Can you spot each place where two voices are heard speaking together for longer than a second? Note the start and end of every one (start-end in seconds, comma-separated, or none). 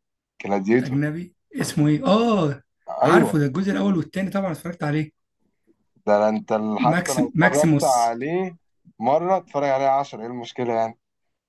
6.8-8.2